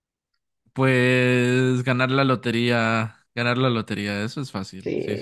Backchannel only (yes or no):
no